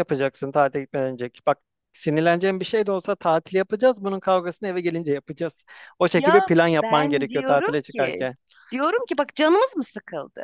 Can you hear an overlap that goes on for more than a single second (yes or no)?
yes